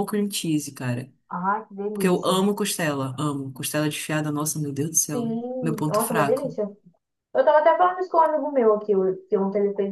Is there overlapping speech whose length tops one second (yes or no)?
yes